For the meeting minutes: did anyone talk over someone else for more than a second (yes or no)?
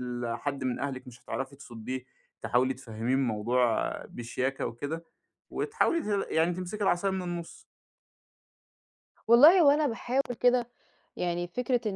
no